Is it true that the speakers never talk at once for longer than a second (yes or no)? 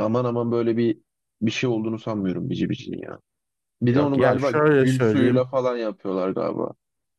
no